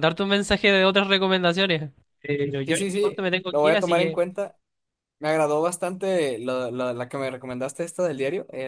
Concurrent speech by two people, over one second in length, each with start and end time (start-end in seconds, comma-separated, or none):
2.6-4.2